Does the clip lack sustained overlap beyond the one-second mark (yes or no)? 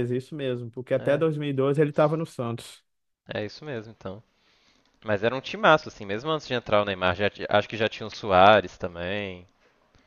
yes